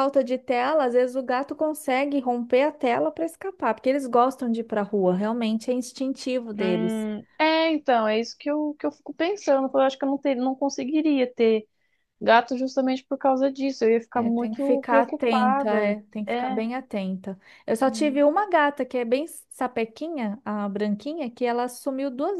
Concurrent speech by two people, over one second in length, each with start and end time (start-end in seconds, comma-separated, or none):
14.1-16.6